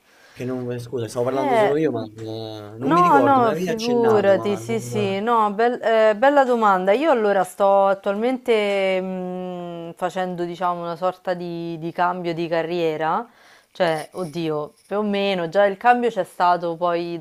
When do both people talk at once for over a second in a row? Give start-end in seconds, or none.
2.8-5.2